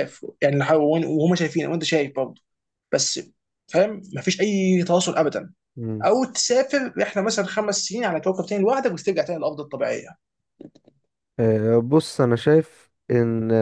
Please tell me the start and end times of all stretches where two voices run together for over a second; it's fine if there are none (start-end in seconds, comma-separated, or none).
none